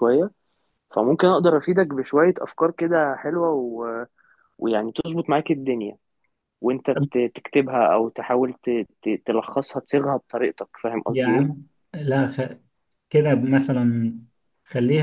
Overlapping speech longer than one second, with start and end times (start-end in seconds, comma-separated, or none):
none